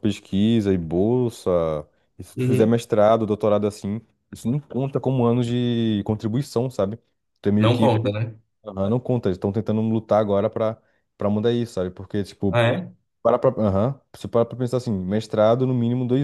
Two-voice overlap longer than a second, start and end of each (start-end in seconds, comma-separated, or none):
none